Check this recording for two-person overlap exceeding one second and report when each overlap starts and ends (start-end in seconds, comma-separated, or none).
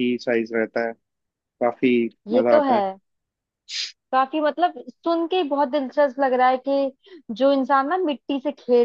none